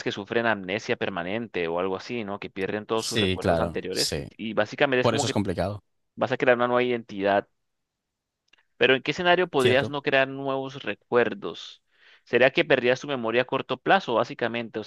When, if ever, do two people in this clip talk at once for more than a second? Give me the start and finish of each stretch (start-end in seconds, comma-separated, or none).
2.9-4.3